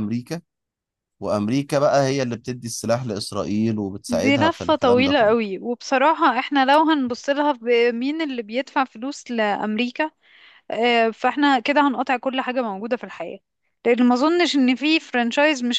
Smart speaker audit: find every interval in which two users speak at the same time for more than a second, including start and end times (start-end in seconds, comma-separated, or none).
4.1-5.5